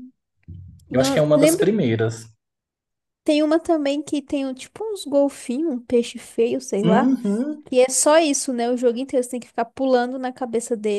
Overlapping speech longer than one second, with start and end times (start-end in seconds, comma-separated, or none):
none